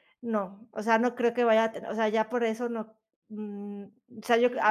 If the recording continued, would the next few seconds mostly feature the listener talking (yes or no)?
yes